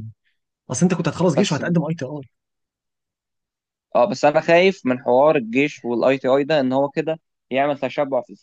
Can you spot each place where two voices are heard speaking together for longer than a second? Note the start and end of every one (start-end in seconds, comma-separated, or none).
none